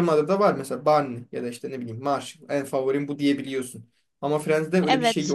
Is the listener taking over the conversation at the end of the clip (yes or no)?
yes